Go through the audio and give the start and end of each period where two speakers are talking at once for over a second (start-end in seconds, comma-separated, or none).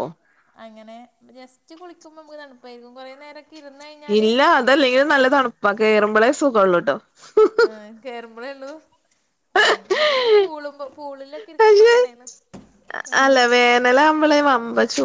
none